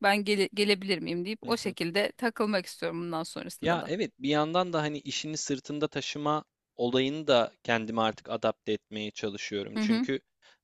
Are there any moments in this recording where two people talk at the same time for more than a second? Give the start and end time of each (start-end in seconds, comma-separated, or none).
none